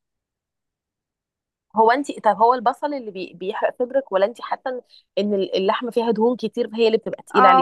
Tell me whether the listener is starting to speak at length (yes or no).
yes